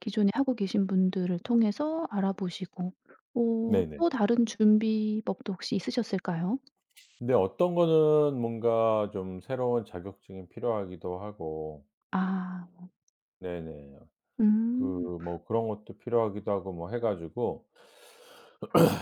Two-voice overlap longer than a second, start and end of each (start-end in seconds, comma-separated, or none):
none